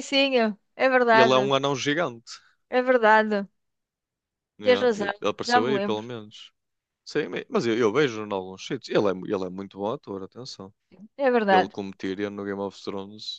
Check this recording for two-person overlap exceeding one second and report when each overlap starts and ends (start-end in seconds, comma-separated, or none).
4.6-6.1